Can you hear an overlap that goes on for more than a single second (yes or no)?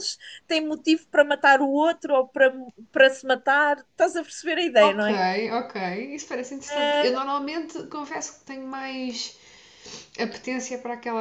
no